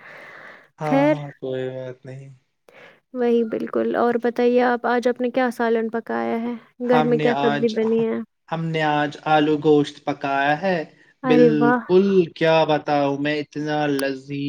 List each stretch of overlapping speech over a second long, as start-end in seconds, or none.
none